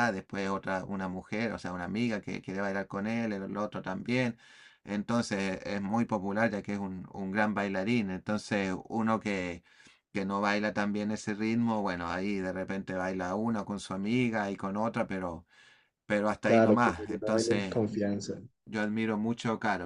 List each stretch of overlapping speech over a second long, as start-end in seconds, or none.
16.5-17.7